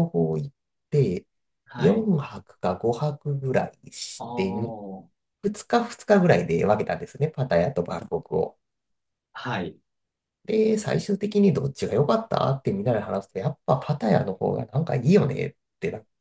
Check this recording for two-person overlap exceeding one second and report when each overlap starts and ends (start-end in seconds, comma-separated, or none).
none